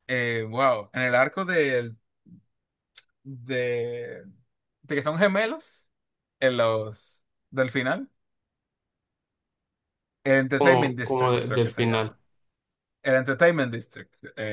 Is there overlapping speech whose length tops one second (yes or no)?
yes